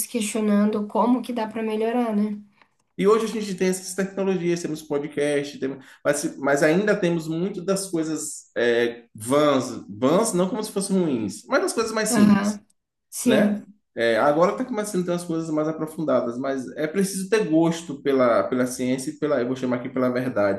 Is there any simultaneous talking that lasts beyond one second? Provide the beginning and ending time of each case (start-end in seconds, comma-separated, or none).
none